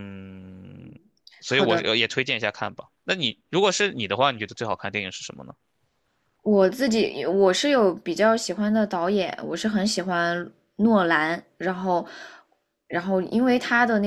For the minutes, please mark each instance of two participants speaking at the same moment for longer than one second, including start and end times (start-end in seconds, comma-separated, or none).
none